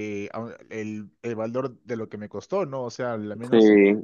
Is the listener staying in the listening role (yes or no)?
yes